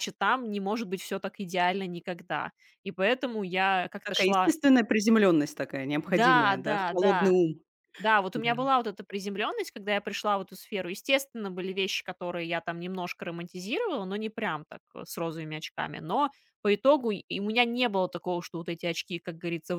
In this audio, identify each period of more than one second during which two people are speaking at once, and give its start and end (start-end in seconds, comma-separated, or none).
6.0-7.4